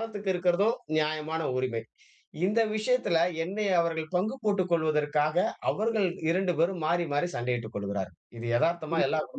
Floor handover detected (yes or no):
yes